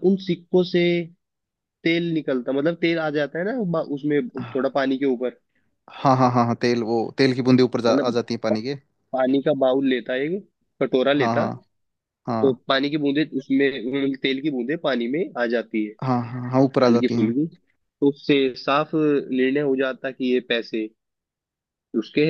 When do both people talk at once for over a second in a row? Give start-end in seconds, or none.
none